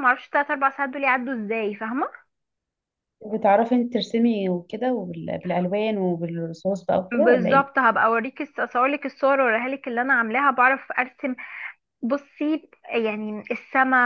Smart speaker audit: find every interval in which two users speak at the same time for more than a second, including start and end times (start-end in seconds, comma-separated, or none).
none